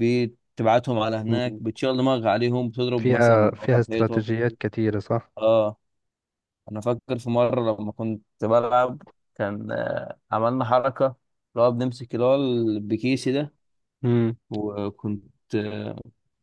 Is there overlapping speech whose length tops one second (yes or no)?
yes